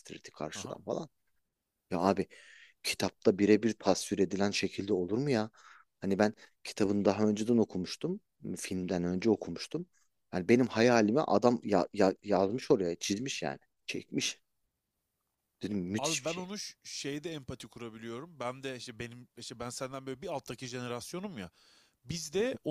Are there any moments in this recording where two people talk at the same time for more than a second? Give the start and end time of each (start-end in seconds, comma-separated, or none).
none